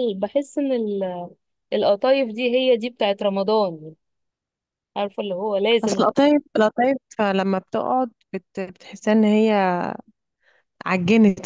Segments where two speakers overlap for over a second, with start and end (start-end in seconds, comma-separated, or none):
none